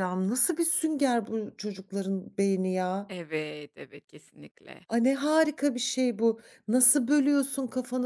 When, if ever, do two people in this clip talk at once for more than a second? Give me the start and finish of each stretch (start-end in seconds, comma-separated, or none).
none